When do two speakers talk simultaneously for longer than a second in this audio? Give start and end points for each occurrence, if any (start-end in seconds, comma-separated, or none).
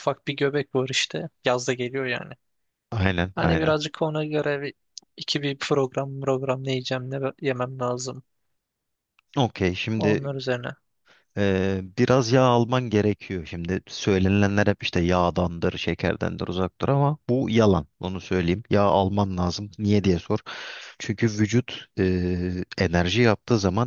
none